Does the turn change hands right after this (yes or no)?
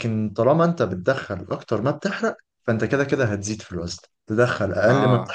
no